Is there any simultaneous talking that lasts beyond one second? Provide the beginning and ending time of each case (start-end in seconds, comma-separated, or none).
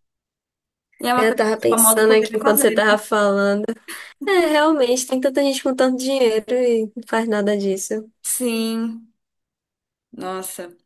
1.1-2.8